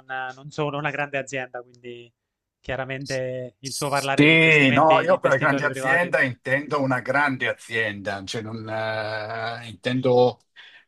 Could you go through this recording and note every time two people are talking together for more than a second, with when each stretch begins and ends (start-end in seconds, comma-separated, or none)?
3.6-6.1